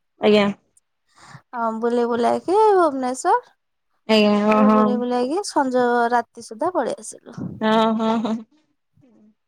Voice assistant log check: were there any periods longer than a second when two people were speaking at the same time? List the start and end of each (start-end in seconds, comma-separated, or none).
none